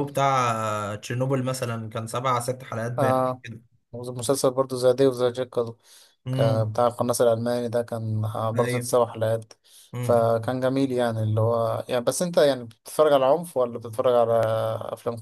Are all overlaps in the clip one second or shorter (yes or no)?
yes